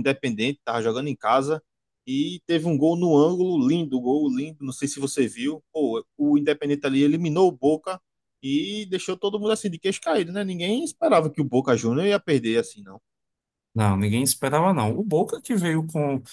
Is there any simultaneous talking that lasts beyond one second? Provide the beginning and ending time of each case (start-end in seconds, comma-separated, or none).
none